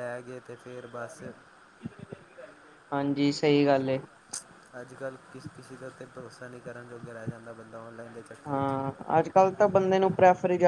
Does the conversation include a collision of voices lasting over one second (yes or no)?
no